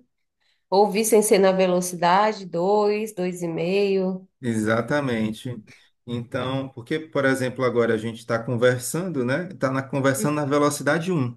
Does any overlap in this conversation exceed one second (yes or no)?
no